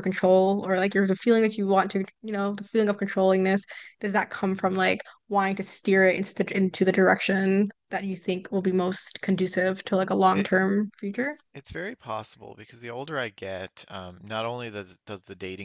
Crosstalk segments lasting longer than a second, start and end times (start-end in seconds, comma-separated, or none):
none